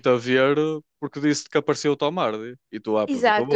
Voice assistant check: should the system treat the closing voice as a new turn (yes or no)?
yes